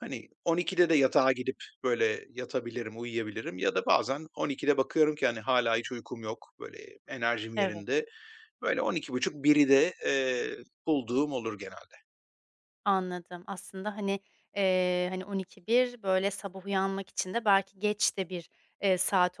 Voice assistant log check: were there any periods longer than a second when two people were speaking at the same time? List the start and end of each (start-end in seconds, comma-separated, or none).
none